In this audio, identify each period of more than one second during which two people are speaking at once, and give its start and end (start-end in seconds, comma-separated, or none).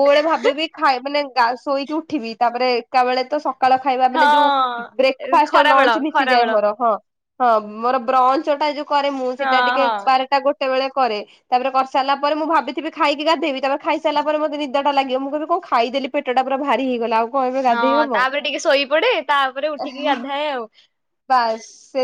4.2-6.5